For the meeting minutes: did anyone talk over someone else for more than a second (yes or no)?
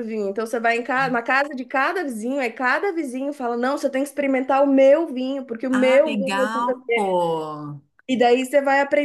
yes